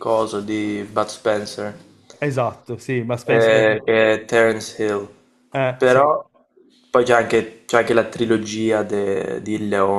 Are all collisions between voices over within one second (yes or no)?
yes